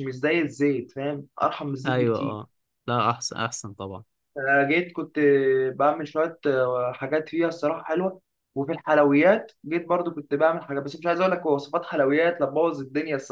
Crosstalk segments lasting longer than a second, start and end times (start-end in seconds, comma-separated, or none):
none